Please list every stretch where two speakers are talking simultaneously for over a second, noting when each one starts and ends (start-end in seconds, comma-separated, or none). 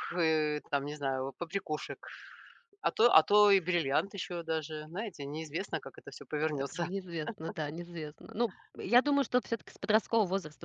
none